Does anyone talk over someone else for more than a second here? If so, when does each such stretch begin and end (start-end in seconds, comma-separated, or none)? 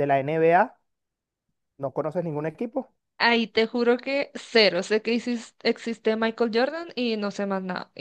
none